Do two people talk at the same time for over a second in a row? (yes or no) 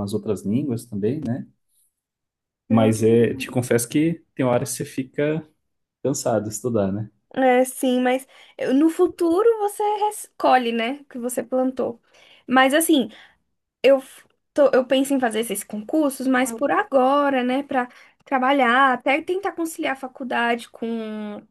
no